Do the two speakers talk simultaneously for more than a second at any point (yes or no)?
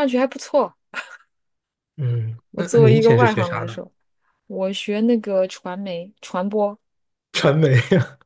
yes